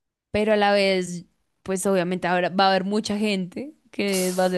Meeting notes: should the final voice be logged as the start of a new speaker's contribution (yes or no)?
no